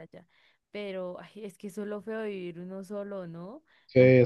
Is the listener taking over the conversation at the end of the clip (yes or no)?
yes